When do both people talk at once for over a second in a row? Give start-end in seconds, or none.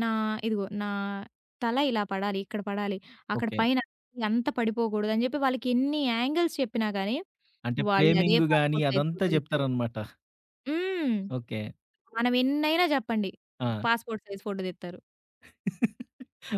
7.9-9.7